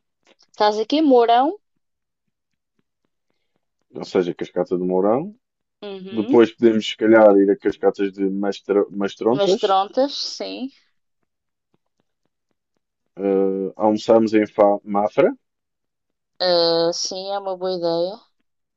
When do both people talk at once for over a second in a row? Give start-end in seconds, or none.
none